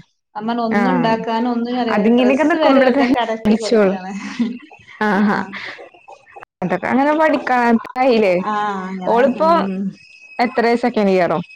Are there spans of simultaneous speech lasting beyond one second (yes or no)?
yes